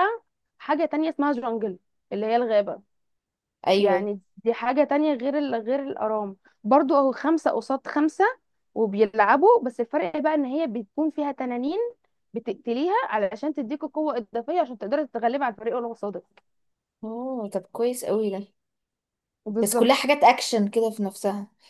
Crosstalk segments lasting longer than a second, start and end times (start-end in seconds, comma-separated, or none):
none